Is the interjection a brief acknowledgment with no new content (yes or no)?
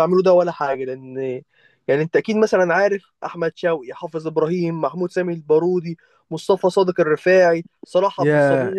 no